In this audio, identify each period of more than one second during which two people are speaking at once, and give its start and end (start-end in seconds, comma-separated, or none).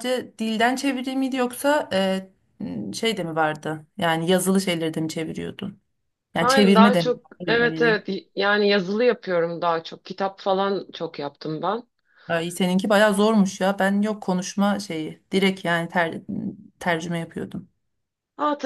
6.4-8.0